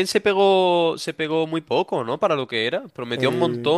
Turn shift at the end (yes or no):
no